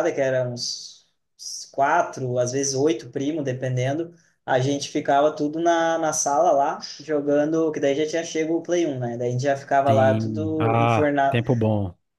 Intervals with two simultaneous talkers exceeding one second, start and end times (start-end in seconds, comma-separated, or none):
9.8-11.4